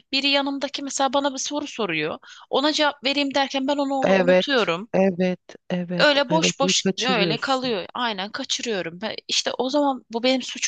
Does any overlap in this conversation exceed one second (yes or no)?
yes